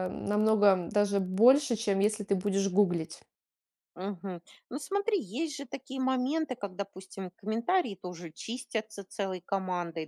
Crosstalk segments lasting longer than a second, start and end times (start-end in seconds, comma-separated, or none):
none